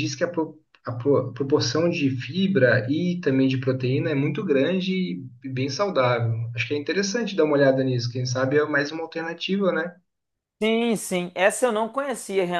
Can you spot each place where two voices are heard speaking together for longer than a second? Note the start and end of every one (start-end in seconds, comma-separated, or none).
none